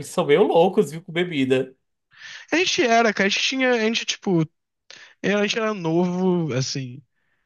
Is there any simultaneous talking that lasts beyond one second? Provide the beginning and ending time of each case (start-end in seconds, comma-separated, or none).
none